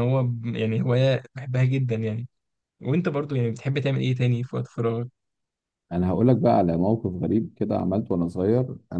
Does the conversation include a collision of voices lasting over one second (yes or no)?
no